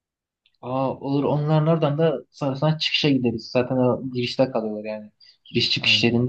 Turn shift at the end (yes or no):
no